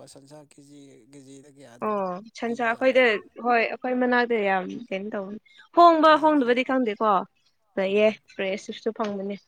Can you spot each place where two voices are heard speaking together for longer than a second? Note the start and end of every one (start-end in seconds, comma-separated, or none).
none